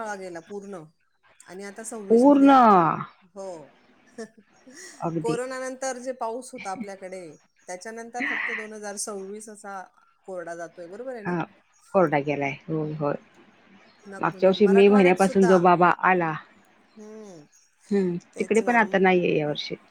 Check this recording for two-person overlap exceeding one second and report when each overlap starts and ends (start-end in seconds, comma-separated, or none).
14.2-15.5